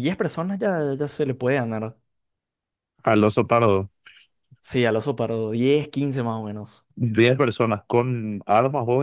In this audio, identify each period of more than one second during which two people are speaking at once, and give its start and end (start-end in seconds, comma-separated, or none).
none